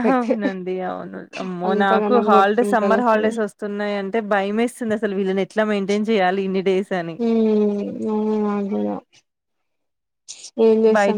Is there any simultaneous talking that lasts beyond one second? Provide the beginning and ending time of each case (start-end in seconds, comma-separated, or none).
1.7-3.4